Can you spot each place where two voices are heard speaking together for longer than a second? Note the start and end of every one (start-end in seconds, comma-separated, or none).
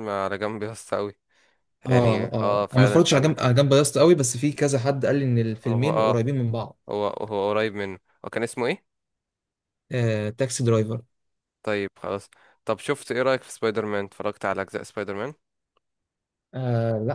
1.9-3.5